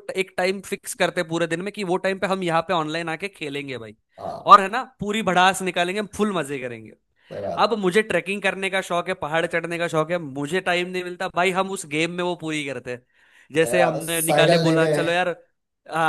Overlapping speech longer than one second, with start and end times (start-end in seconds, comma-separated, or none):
13.6-14.9